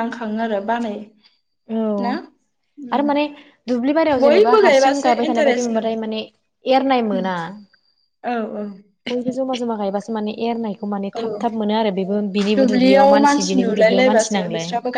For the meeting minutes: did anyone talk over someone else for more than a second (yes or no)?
yes